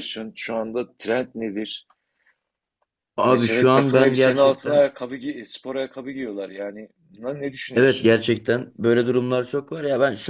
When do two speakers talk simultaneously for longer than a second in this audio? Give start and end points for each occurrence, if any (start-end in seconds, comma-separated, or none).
3.3-4.9